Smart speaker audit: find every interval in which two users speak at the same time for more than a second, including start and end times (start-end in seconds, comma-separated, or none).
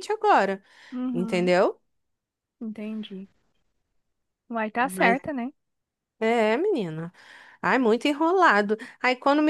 none